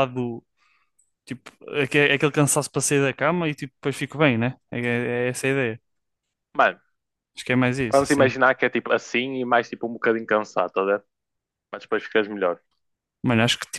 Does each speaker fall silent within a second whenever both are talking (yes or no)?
yes